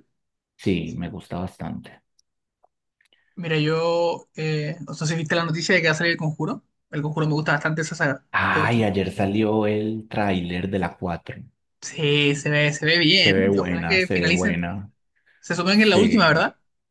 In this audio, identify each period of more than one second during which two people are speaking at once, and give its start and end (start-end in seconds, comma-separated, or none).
13.2-14.7